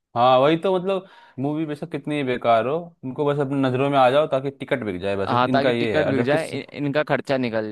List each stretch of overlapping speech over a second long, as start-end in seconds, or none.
5.3-6.5